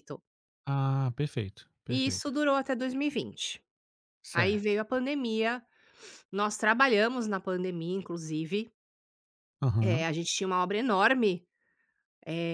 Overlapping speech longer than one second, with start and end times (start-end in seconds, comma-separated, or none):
none